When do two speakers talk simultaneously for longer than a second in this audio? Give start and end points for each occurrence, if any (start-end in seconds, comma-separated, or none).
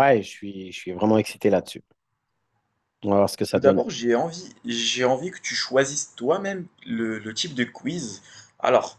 none